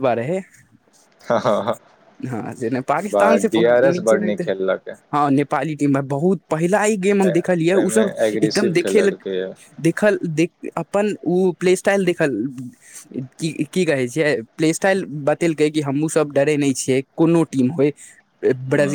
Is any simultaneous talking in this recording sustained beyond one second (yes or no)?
yes